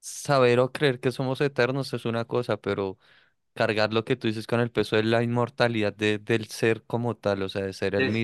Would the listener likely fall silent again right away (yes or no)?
no